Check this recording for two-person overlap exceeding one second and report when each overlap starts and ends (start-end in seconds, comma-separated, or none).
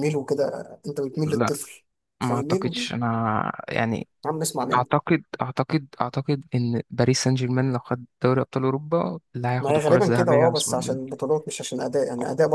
9.6-11.2